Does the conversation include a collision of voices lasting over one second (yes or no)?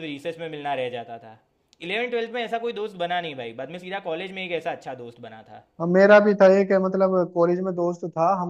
no